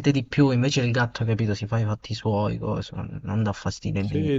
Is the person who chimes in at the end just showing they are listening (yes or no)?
no